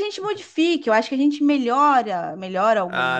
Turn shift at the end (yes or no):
yes